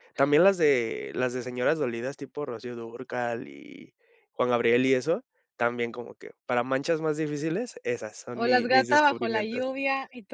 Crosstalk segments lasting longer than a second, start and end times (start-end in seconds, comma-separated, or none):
8.3-9.6